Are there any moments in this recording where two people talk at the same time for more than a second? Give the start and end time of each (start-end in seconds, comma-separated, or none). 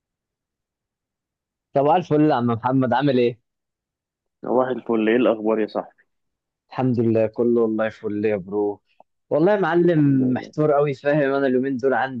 none